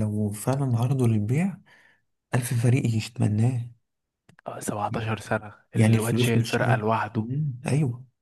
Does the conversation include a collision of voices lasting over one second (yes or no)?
yes